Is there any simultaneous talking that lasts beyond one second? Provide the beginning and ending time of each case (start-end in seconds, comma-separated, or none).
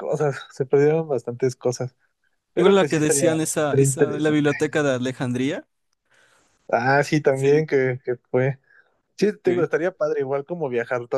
2.5-4.5